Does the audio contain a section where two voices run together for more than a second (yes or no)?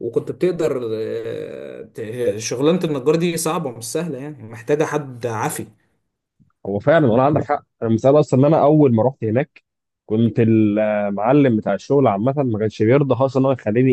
no